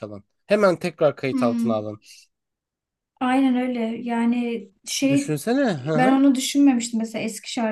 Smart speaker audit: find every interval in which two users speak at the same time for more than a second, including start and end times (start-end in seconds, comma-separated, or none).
none